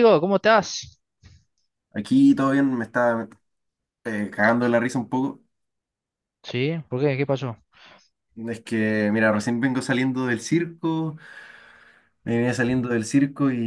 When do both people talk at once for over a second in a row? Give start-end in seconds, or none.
none